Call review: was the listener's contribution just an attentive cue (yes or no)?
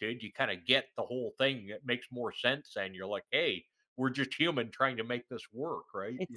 no